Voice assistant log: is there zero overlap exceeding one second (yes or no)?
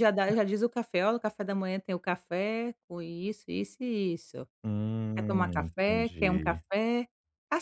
no